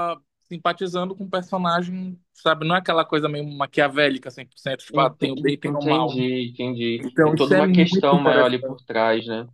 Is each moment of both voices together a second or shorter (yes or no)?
no